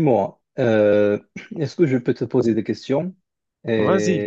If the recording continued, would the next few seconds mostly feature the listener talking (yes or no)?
yes